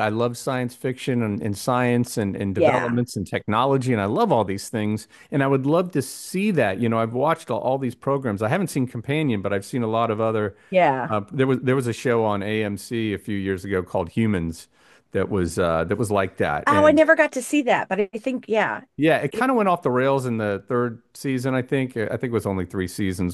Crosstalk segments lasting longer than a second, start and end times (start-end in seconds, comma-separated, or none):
none